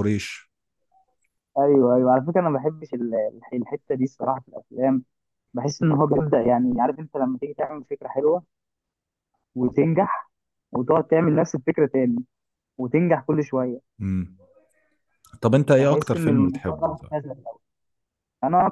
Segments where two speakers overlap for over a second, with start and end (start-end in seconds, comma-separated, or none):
15.8-17.1